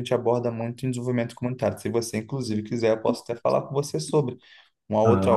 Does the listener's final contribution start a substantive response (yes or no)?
no